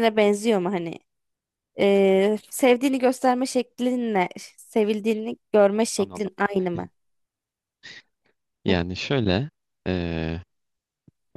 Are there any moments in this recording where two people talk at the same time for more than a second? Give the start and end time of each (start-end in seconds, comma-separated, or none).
none